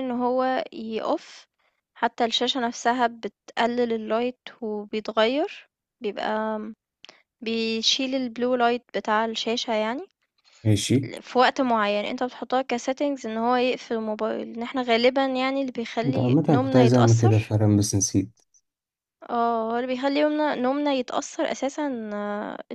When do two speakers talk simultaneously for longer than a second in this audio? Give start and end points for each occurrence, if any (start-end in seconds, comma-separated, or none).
16.0-17.6